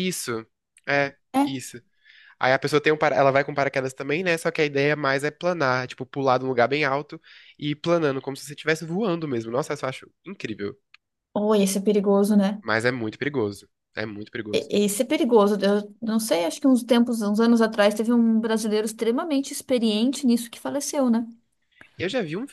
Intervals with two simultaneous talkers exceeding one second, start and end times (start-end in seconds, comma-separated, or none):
none